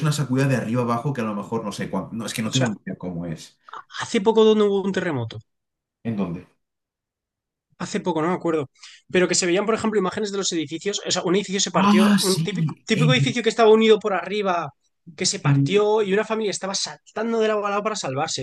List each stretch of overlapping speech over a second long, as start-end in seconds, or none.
11.7-13.4